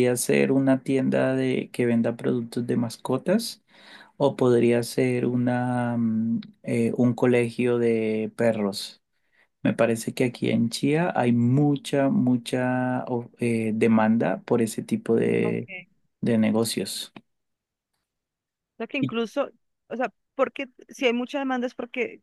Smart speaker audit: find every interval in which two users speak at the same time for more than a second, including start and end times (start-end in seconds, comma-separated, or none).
none